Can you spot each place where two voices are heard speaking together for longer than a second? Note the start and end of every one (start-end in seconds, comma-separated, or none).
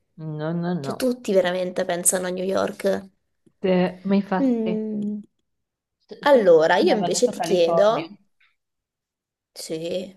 6.3-8.1